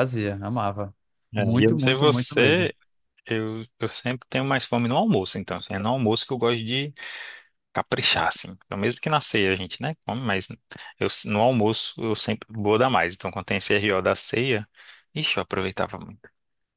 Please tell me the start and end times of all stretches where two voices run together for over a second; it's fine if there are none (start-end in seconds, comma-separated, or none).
1.4-2.7